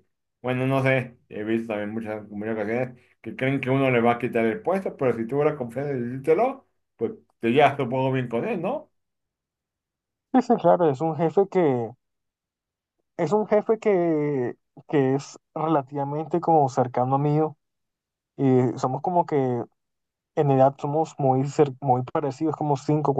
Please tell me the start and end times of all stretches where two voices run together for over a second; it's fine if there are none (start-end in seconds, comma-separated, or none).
none